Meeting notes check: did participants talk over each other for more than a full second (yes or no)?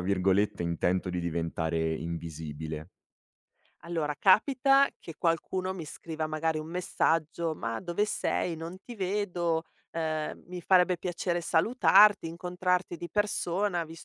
no